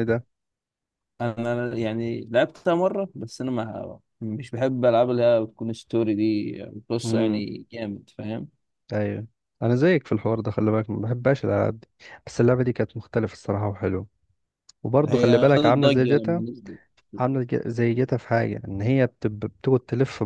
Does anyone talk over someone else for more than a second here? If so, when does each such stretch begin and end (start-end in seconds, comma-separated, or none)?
15.1-16.4